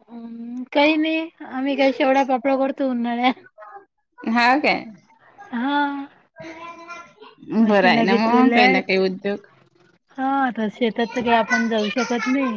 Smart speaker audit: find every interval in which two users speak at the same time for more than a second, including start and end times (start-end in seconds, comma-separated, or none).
7.7-8.9